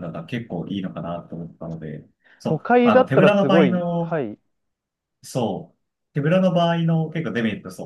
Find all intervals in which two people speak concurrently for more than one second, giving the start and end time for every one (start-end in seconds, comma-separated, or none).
2.4-4.2